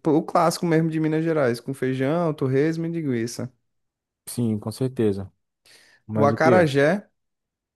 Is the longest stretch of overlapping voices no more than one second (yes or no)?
yes